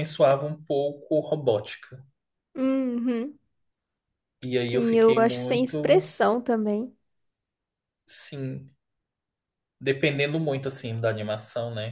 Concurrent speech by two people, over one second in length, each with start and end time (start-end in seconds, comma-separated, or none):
4.6-6.1